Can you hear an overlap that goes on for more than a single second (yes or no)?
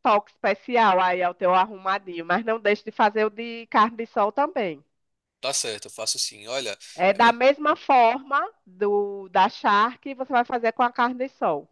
no